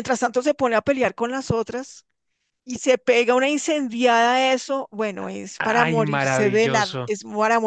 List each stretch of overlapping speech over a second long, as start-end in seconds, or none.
5.6-7.1